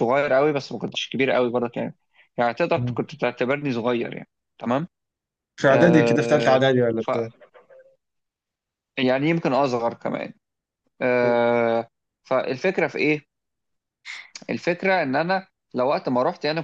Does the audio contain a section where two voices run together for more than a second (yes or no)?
yes